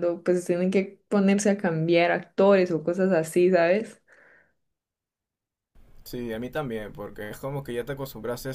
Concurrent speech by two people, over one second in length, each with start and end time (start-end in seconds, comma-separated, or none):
none